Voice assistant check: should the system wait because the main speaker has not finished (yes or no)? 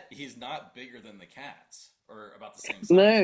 no